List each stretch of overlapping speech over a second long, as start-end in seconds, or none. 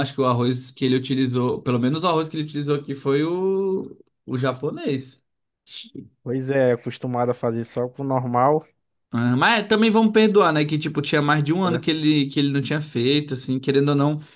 none